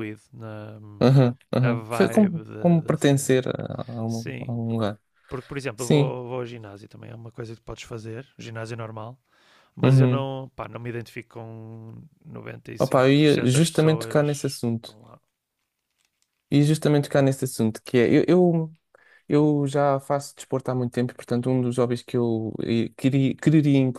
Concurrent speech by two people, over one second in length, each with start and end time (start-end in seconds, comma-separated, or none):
1.6-3.4, 12.8-15.0